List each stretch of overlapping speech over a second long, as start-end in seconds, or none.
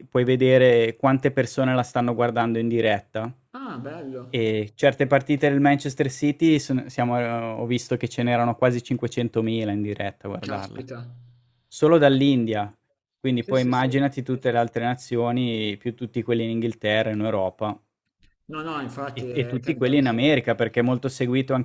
18.7-20.2